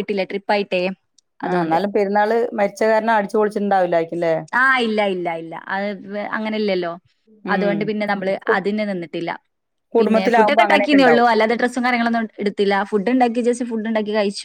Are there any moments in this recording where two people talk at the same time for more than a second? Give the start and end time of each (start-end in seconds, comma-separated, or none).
10.0-11.3